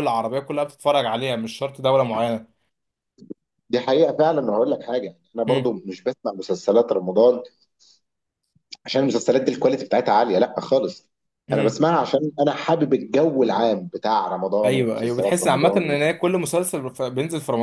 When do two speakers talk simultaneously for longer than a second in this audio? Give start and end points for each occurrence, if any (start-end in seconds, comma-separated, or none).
14.6-16.0